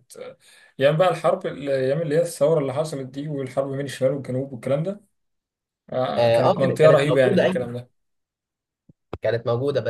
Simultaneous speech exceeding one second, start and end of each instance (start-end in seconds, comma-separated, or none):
6.2-7.7